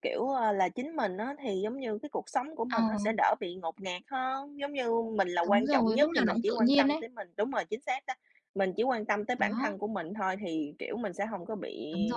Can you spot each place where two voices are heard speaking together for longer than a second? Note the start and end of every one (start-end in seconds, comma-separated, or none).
5.5-7.0